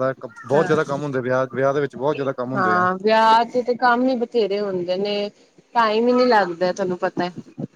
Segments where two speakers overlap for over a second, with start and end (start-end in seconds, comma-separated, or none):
none